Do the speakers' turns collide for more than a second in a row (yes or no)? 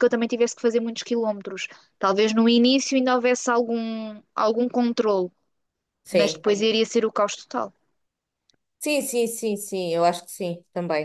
no